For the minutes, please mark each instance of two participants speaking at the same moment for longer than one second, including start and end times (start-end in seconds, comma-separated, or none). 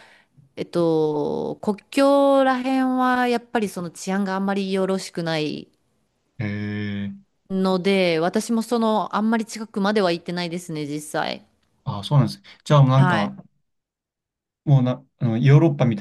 none